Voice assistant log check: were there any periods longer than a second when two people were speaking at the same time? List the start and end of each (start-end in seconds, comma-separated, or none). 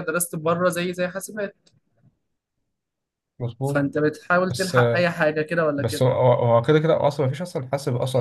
none